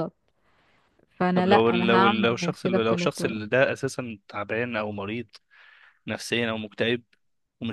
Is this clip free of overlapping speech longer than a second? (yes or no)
no